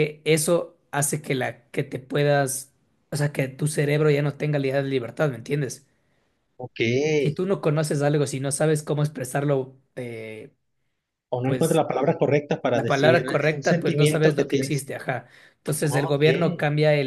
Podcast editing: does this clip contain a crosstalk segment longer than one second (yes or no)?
yes